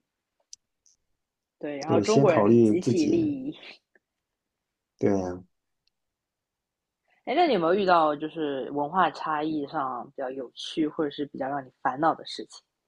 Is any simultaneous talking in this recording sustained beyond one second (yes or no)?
yes